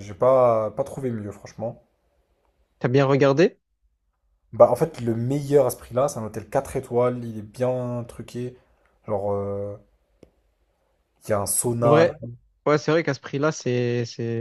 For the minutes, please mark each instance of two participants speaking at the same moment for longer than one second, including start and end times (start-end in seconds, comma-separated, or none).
none